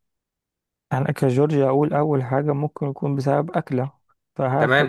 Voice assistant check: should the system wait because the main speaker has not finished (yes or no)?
no